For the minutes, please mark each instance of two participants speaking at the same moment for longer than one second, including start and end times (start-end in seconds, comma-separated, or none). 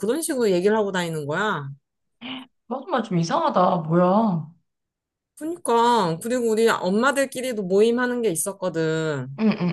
none